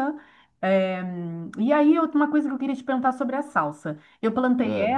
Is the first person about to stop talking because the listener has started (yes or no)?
no